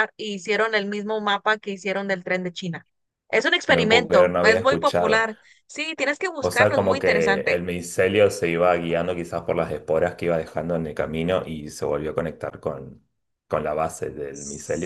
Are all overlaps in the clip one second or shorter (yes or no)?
no